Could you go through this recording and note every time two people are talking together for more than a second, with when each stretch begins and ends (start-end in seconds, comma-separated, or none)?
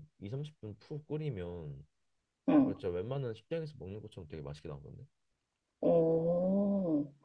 none